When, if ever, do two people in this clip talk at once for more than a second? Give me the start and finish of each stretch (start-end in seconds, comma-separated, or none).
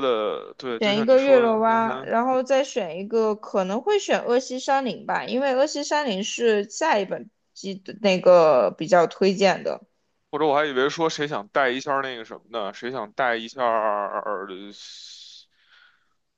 0.8-2.1